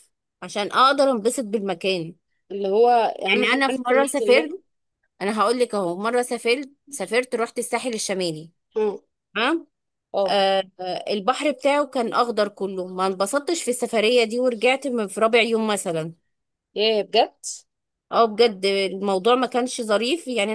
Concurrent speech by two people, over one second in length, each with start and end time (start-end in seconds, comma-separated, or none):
3.3-4.6